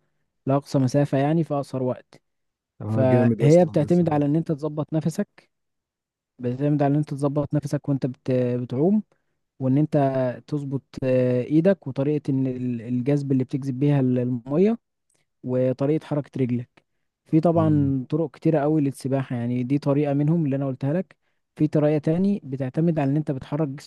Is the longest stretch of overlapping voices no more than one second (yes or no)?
no